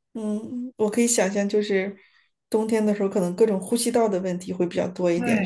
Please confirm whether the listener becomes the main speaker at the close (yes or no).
yes